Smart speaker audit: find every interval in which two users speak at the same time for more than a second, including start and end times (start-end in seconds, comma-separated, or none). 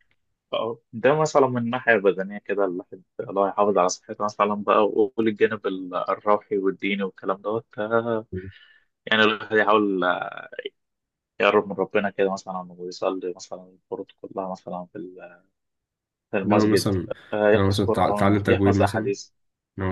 17.5-19.1